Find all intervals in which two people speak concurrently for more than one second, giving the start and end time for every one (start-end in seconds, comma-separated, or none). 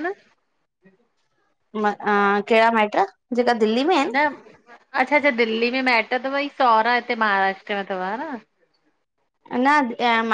none